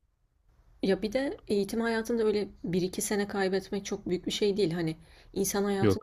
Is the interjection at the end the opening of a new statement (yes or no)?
no